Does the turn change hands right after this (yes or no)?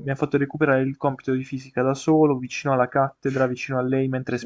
no